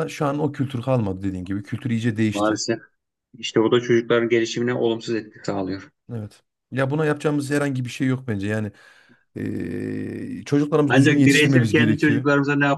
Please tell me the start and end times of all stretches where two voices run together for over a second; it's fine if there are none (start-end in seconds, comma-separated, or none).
10.9-12.3